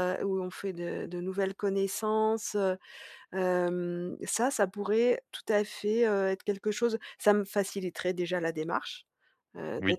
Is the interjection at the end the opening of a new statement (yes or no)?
no